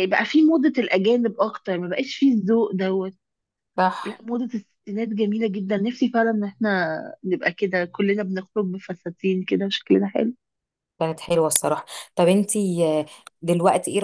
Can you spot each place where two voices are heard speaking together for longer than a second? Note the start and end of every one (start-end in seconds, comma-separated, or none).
none